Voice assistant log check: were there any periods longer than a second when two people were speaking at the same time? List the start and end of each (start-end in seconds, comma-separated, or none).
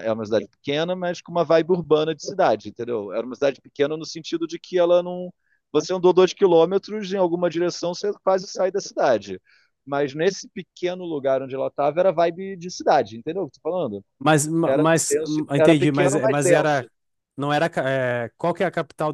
14.6-16.9